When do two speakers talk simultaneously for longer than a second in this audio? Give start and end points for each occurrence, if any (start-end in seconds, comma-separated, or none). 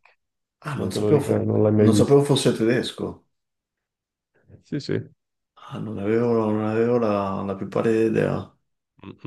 0.8-2.2